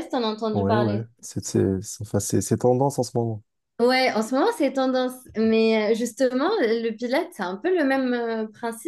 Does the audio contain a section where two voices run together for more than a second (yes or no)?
no